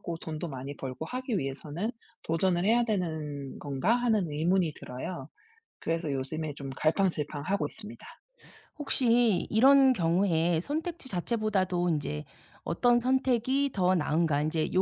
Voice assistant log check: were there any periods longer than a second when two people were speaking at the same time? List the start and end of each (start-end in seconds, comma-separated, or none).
none